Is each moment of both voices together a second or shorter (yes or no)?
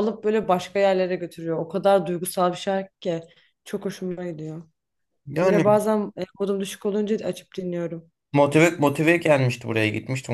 yes